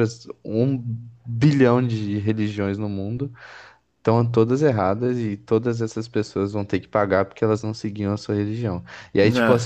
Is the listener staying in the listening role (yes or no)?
yes